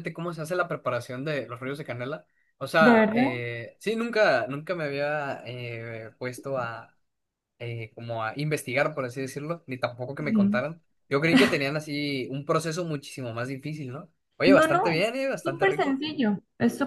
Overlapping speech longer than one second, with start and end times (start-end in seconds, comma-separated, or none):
14.4-16.0